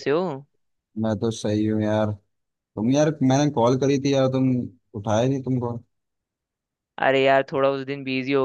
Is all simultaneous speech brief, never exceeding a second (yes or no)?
yes